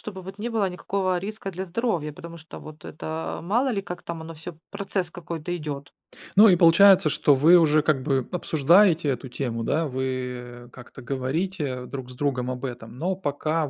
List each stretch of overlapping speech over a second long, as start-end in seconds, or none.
none